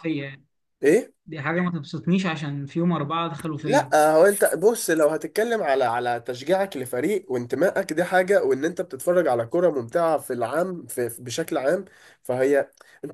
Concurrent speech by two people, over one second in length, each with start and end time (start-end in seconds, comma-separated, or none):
none